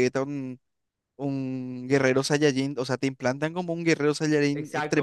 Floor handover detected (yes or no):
yes